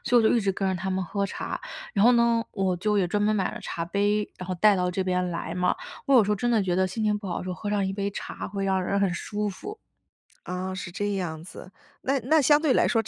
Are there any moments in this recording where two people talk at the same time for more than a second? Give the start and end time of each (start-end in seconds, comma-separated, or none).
none